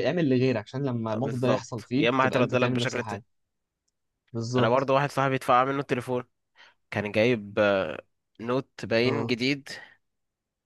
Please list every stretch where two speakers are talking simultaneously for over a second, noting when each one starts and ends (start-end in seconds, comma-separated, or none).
1.2-3.2